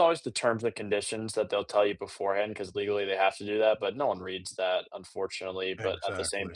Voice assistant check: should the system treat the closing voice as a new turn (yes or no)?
no